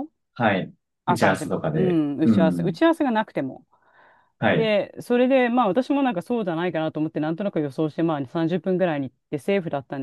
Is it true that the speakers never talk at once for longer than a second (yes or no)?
no